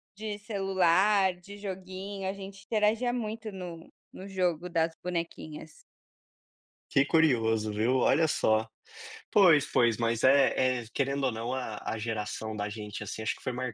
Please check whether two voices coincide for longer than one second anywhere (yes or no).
no